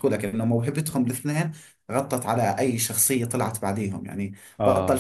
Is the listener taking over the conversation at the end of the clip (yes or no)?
no